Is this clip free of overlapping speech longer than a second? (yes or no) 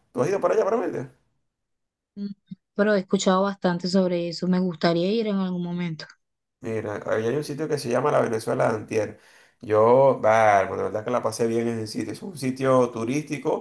yes